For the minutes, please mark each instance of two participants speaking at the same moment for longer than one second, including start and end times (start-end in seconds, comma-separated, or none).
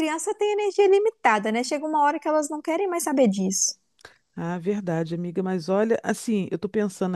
none